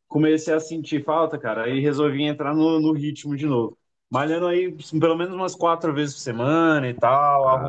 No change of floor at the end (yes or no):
yes